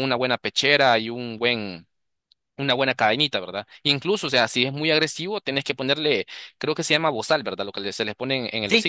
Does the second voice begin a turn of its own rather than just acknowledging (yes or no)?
yes